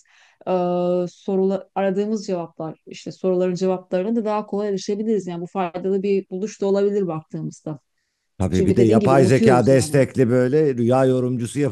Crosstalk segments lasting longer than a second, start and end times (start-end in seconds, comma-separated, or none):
8.5-10.1